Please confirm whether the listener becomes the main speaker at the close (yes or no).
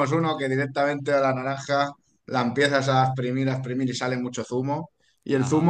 no